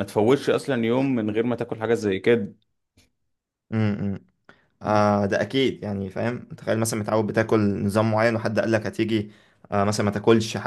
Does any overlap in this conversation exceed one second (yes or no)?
no